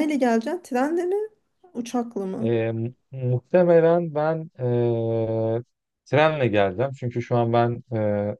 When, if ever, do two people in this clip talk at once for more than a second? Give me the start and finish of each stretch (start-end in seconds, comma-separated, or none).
none